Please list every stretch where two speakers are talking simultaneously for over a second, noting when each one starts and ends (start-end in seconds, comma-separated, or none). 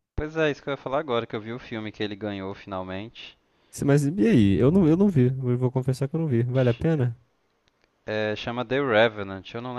none